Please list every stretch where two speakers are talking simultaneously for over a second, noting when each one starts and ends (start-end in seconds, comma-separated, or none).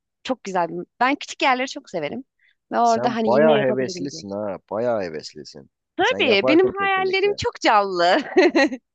2.8-4.2, 6.0-7.3